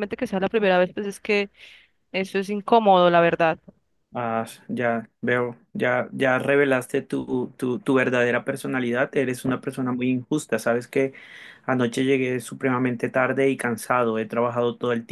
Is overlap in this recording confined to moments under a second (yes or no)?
yes